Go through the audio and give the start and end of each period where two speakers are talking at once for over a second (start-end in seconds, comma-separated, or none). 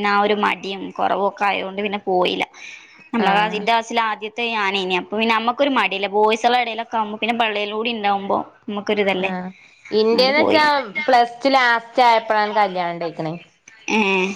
none